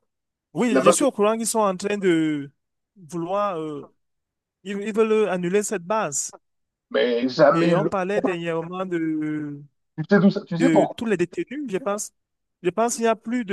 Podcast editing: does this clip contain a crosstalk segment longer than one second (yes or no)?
no